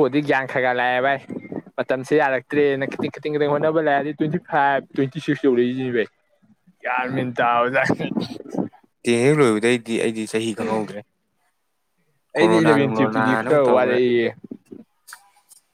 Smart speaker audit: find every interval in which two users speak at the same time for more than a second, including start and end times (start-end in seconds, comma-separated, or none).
12.4-13.9